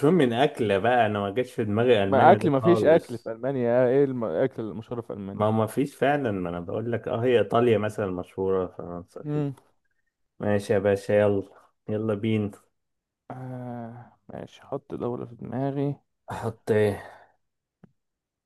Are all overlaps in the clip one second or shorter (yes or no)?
no